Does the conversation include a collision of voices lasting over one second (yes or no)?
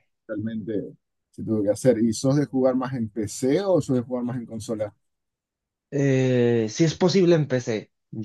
no